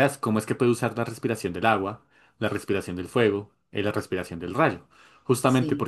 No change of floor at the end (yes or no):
yes